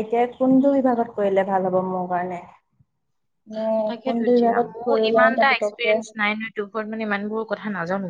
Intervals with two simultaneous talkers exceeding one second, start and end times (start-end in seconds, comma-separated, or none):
4.0-5.9